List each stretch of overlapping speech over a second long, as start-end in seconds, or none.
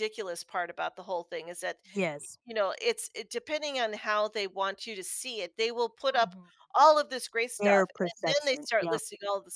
7.6-9.0